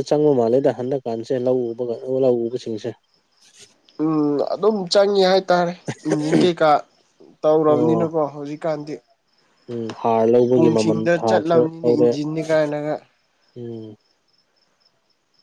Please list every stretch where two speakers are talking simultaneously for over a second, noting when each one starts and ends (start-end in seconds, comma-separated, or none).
10.6-12.1